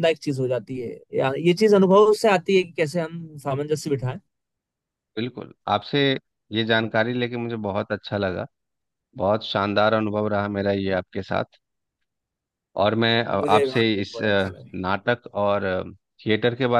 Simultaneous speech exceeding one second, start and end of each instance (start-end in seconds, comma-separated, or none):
13.3-14.9